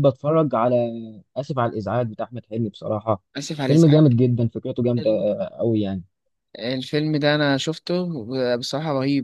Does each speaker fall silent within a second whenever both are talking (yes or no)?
yes